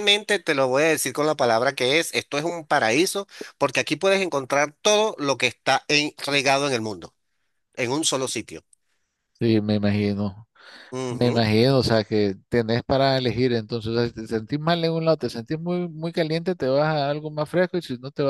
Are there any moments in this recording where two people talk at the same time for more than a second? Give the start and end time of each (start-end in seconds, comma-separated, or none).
none